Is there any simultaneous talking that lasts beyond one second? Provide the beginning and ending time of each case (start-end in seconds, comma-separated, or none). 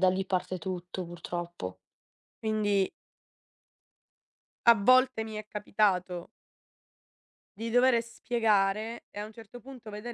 none